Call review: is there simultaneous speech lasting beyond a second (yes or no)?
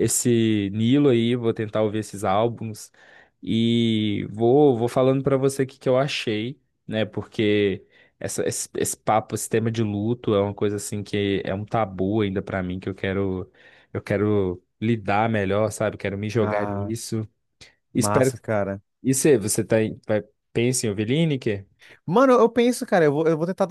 no